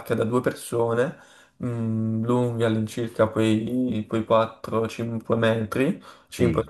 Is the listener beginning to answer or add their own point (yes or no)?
no